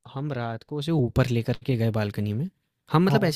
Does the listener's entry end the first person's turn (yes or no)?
no